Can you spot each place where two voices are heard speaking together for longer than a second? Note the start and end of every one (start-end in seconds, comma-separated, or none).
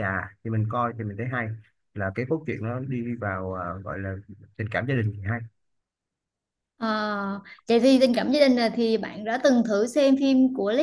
none